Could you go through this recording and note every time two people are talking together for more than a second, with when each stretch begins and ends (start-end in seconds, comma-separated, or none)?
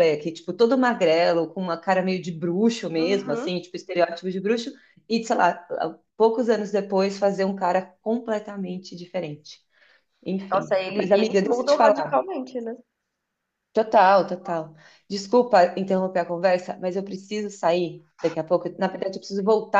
10.5-12.3